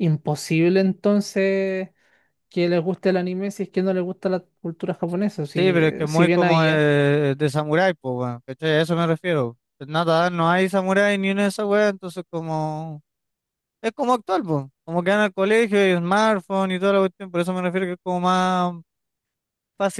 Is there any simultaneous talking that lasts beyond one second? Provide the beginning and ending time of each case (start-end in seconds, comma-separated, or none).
5.5-6.8